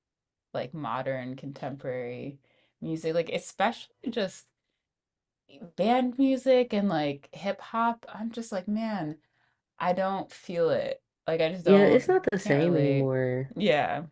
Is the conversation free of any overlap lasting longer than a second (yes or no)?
no